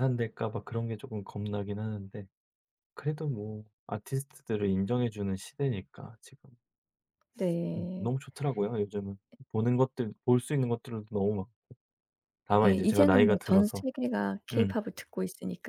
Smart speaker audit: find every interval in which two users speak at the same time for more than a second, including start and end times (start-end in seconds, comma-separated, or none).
12.6-13.8